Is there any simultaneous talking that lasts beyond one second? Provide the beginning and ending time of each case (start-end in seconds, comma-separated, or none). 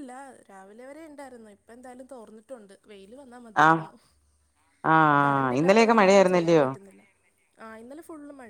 5.0-6.6